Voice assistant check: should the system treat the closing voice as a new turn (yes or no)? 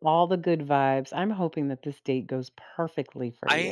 yes